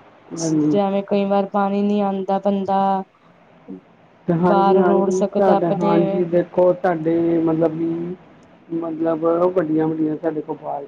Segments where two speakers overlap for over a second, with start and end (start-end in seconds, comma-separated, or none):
4.5-5.9